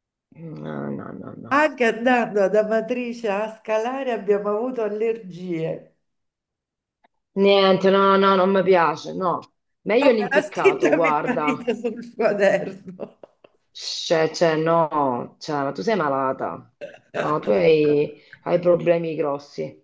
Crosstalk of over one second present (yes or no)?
yes